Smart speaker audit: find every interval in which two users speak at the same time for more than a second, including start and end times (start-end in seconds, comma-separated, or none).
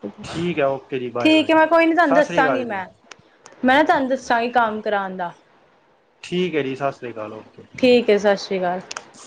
1.2-2.8